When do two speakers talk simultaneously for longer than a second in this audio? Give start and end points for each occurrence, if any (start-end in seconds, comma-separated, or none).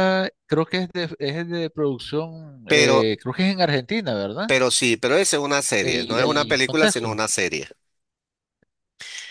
5.8-7.2